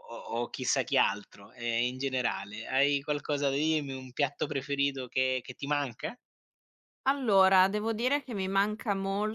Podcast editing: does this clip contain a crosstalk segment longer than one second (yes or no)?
no